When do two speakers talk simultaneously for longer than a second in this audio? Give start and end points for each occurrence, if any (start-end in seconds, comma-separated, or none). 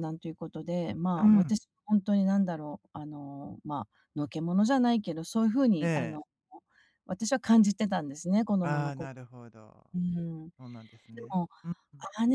none